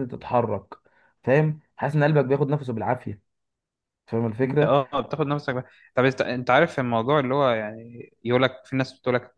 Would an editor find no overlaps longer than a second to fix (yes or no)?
yes